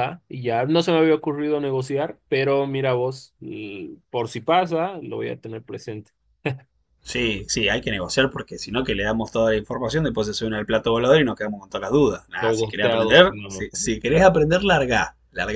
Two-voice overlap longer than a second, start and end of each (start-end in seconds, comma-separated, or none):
12.4-14.3